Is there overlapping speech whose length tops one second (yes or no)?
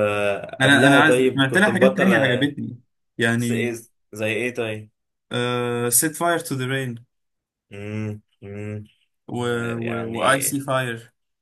yes